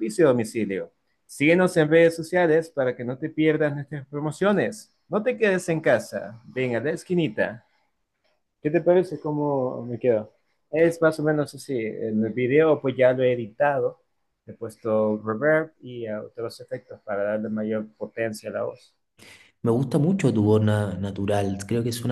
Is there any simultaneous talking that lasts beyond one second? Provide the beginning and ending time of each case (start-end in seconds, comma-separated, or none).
none